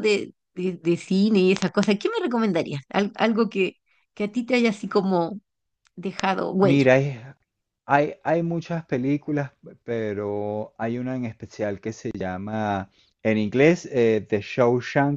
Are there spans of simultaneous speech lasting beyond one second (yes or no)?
no